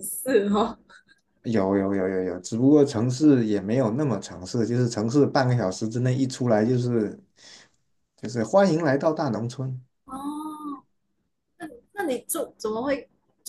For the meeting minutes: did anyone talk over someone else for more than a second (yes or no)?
no